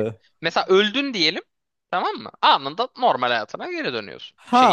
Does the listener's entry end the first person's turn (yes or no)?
yes